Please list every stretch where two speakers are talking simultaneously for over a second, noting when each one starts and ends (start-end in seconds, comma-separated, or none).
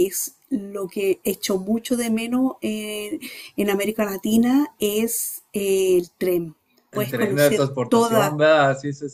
6.9-8.4